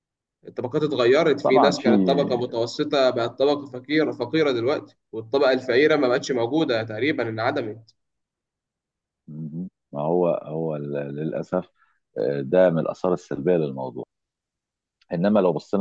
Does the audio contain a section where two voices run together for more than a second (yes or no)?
no